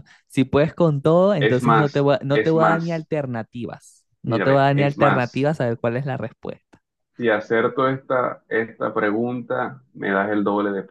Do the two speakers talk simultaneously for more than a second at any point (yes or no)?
yes